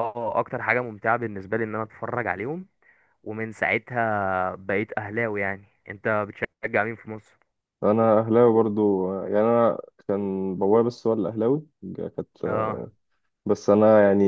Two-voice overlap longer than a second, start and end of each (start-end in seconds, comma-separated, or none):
none